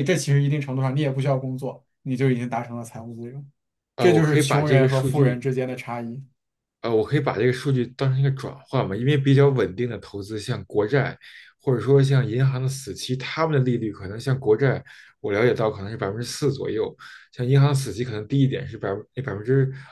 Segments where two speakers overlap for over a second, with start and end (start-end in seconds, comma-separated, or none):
4.0-5.4